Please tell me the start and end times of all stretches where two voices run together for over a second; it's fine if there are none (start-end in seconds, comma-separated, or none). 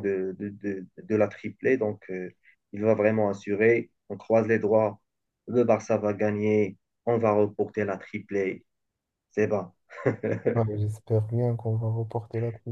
none